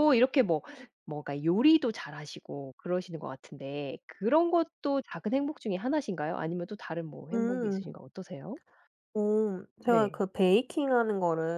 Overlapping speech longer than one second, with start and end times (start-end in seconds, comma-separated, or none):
none